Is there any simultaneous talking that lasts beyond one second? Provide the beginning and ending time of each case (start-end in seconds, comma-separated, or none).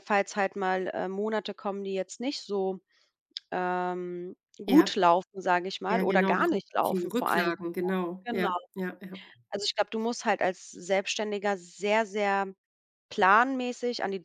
5.9-7.5